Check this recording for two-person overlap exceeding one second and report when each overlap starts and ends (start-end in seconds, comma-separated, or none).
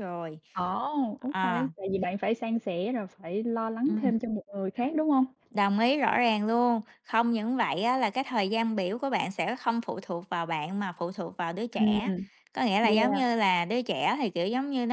none